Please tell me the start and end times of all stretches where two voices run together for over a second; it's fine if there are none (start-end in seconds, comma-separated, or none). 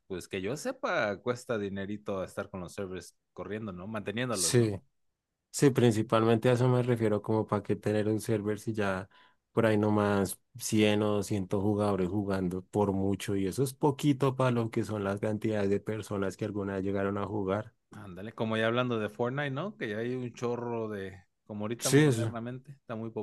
none